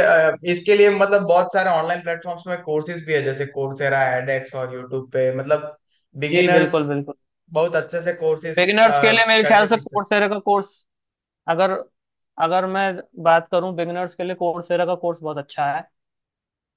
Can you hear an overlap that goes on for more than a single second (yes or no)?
yes